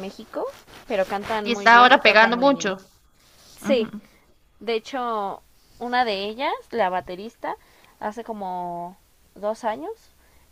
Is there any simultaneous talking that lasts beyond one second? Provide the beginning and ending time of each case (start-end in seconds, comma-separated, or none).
1.4-2.8